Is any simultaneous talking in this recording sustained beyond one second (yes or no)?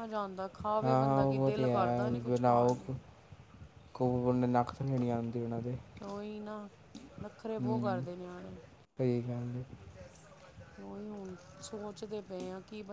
yes